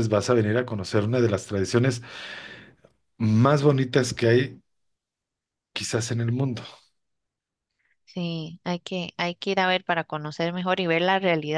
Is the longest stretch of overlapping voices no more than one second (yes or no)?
yes